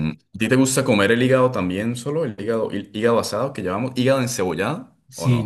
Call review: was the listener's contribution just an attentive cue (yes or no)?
no